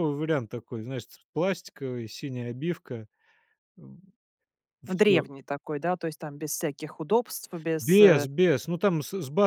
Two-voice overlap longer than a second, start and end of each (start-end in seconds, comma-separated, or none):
none